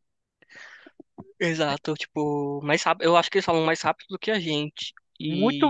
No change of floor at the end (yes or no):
no